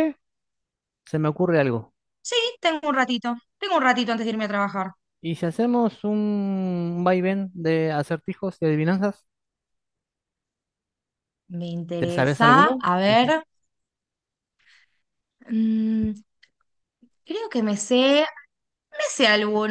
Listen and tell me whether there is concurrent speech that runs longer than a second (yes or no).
yes